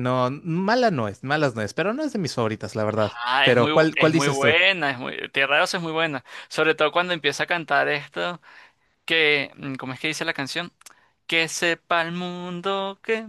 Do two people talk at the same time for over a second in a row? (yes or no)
yes